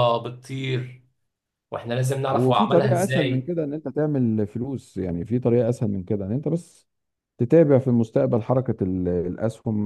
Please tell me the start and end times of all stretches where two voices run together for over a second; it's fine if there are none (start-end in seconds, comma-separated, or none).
2.3-3.5